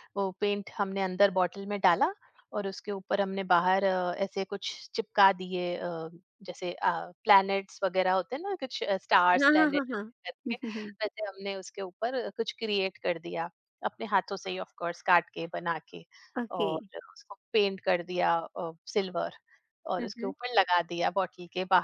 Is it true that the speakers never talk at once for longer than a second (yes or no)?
yes